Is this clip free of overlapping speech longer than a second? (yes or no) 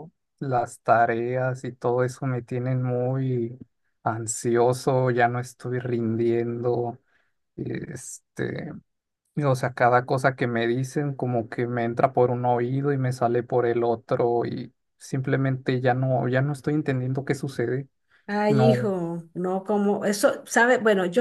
yes